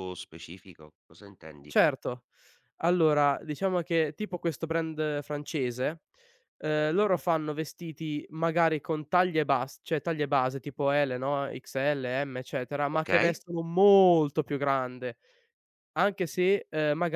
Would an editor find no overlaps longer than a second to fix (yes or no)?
yes